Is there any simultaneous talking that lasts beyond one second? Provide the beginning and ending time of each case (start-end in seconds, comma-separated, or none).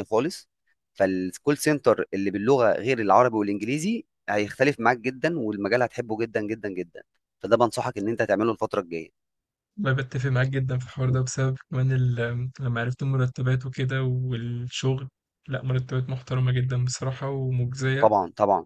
none